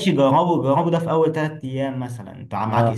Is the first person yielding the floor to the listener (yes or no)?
no